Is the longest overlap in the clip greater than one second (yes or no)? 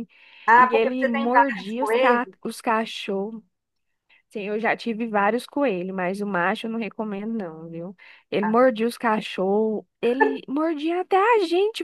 yes